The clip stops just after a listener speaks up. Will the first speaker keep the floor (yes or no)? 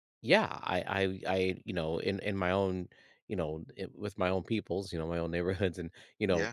yes